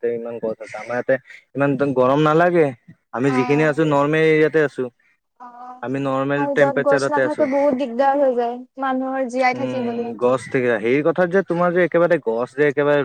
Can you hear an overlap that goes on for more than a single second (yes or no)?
yes